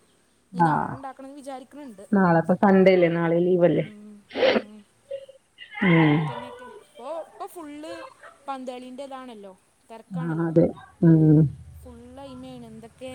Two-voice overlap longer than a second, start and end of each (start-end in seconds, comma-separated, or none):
none